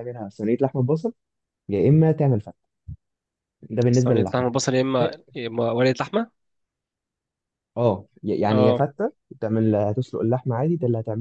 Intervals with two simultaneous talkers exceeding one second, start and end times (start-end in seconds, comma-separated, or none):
none